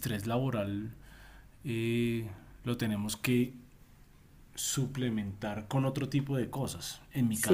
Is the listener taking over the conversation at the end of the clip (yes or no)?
no